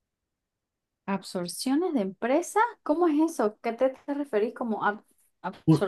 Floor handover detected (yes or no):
yes